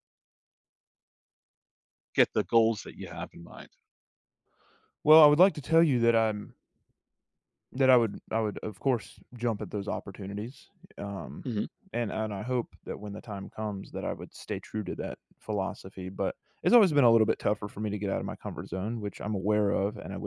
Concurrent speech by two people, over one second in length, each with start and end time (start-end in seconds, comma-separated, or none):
none